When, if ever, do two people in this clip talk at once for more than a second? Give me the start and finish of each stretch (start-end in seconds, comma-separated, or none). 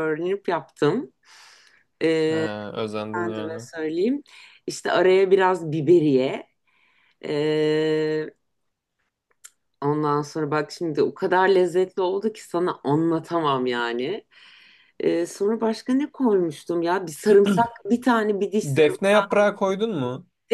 none